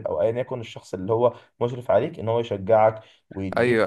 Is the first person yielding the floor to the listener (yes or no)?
yes